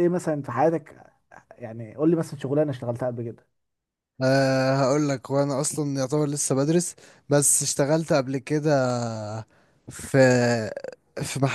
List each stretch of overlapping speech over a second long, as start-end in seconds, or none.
none